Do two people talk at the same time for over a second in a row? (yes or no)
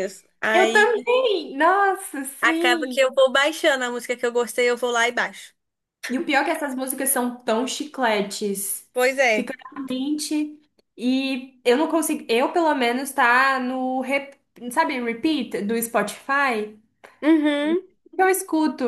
no